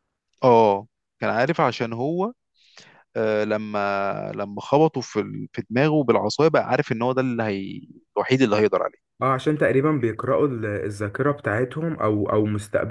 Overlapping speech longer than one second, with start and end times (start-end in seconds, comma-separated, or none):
none